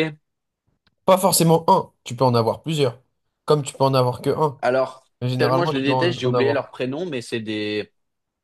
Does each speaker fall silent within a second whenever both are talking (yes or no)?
no